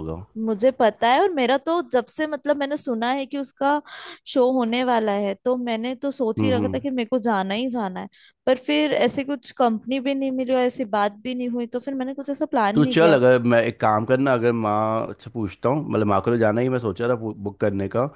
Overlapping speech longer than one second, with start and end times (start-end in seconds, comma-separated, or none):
none